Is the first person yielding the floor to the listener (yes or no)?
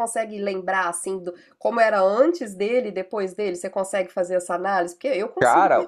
yes